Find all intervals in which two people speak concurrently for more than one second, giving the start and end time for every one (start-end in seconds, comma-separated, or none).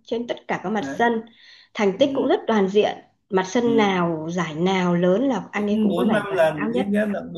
5.5-6.9